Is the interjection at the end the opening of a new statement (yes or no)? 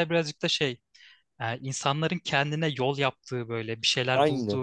no